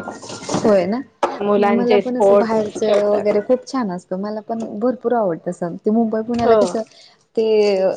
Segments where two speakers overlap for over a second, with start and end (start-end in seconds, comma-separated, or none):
1.6-3.2